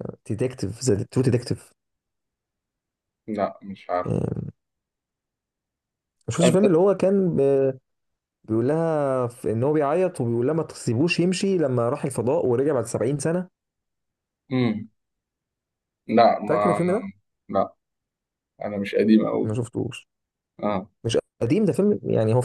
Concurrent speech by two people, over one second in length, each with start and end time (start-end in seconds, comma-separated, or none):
none